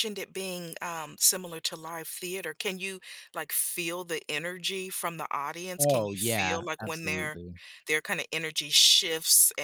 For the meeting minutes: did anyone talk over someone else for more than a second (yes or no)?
yes